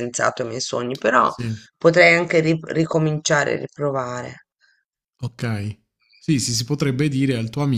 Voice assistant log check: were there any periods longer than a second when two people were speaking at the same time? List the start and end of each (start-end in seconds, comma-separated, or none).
none